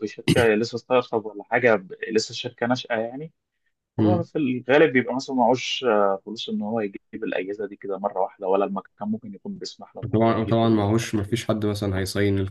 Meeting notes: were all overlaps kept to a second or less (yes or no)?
no